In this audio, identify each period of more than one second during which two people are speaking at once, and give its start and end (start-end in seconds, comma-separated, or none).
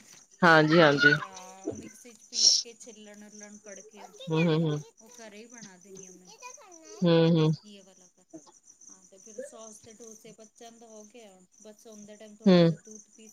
none